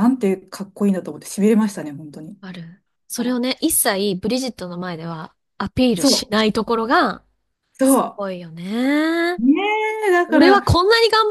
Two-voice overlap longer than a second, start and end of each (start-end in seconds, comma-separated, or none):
none